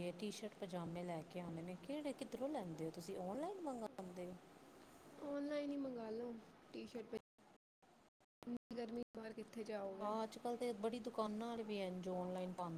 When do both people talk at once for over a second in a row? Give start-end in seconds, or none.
none